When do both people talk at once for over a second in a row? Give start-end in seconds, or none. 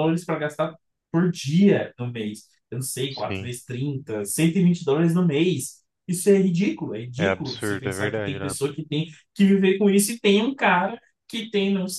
7.2-8.5